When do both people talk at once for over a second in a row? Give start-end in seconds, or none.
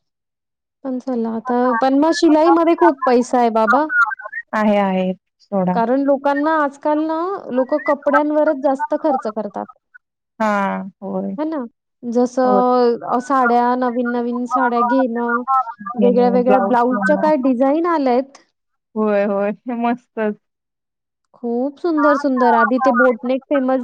16.0-17.3